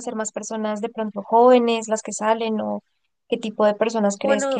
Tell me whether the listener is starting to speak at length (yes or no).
no